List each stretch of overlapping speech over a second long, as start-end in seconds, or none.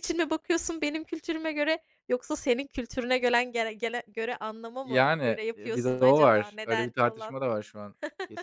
4.8-7.4